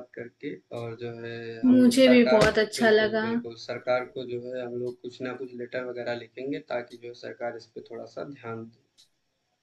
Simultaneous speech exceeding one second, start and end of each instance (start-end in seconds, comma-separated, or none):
1.6-3.2